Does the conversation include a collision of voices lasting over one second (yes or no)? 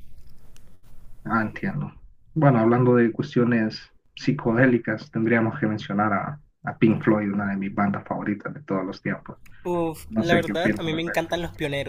yes